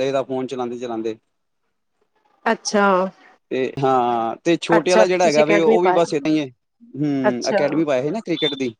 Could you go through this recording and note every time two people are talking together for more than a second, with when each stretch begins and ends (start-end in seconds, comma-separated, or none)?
4.8-6.1